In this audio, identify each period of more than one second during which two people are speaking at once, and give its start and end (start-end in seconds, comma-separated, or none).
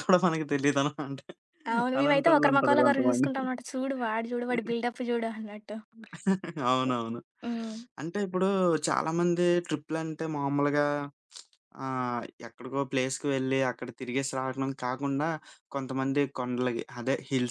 2.0-3.3